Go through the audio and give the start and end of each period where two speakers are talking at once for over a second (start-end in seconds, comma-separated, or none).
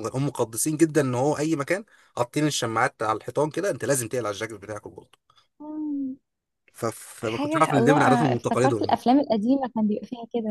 7.2-9.0